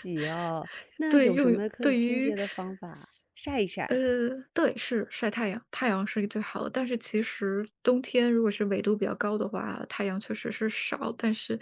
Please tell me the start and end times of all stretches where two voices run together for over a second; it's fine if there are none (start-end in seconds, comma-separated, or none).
1.1-2.3